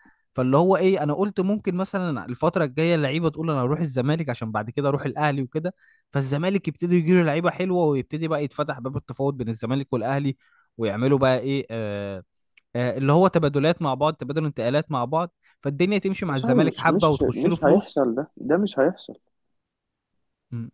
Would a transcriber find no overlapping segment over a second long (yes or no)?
no